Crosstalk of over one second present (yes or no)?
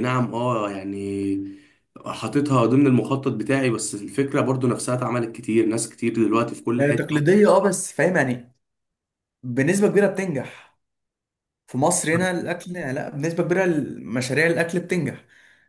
no